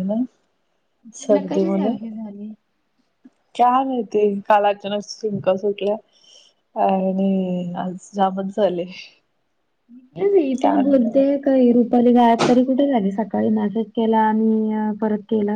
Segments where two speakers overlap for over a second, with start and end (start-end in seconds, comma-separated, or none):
none